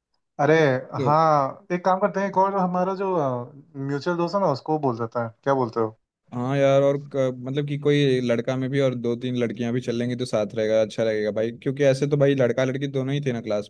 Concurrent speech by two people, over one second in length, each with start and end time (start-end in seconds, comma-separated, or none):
none